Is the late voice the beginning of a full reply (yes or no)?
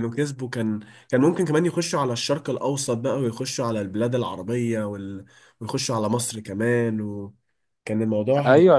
yes